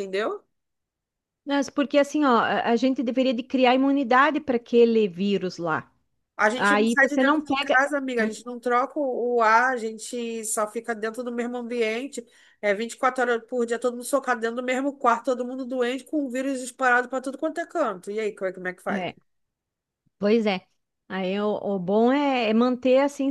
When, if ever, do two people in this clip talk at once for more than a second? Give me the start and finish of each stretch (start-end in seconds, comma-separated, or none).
6.5-7.8